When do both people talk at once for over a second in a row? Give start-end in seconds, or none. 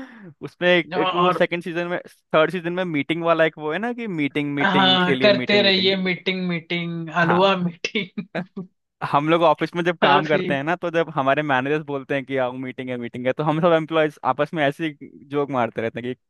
4.6-5.9